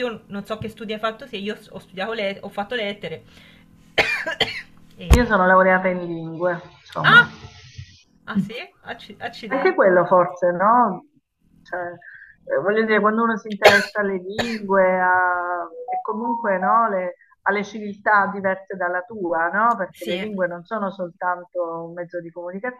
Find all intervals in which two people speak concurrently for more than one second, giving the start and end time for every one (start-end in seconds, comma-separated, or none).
none